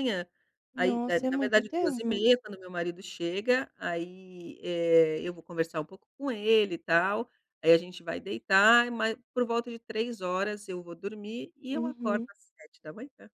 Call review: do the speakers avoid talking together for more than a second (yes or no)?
no